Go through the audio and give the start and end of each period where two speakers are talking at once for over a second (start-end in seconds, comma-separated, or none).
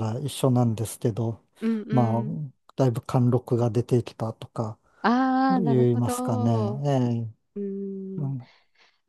5.5-6.8